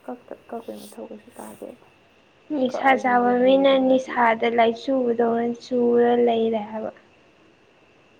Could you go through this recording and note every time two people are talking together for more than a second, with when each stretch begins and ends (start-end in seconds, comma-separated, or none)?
2.7-4.1